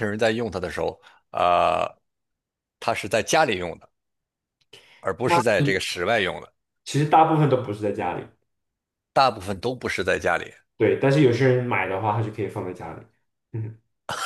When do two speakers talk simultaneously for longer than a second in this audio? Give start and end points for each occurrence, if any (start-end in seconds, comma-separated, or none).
none